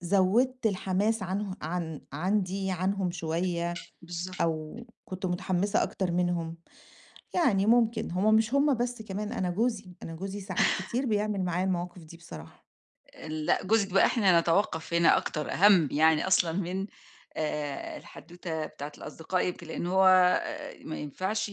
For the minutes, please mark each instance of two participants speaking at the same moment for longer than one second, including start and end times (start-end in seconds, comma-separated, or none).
none